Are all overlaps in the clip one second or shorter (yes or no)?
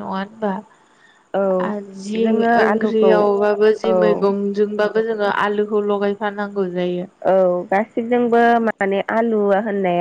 yes